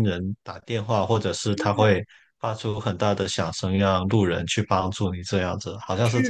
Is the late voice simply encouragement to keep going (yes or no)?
no